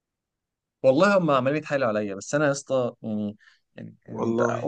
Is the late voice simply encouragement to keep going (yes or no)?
yes